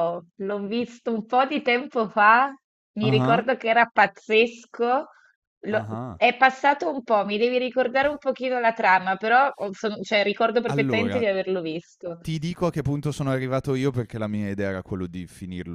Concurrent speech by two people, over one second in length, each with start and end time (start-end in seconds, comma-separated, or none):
none